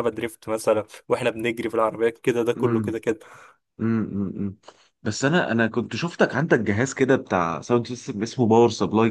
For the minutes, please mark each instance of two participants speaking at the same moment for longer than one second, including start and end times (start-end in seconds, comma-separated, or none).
none